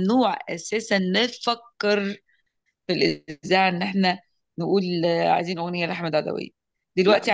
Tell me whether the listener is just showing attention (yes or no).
yes